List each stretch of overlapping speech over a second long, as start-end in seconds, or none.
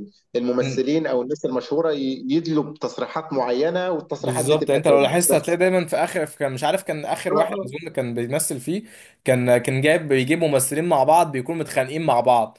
4.2-5.6